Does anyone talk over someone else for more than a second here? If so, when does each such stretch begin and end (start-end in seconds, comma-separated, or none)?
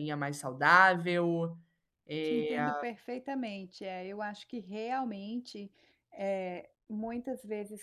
none